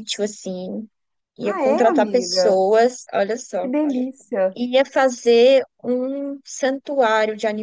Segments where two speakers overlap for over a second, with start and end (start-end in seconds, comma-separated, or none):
1.4-2.6